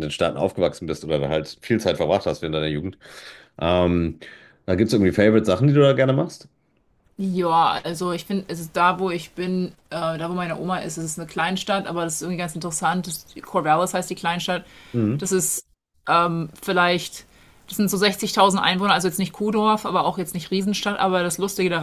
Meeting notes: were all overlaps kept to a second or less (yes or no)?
yes